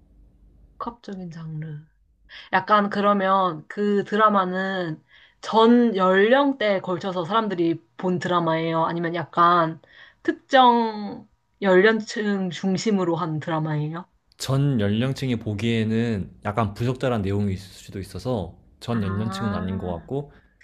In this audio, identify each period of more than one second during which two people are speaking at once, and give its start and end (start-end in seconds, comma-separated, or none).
18.9-20.1